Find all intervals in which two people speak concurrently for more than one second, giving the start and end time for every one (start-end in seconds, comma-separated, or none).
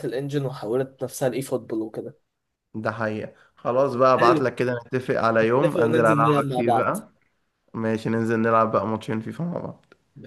5.6-7.0